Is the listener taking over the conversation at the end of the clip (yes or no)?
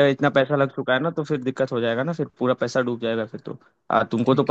no